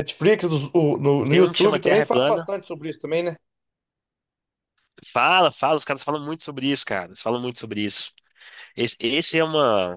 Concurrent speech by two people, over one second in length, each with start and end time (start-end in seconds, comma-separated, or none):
1.3-2.5